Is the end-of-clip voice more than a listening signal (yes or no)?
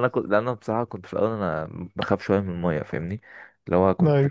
no